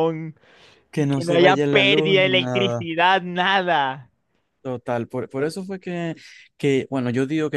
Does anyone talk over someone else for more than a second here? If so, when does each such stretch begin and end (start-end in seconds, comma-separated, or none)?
1.1-2.9